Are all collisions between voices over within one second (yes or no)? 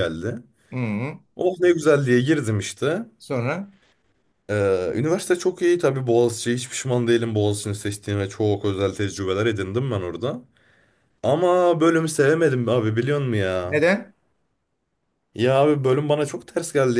yes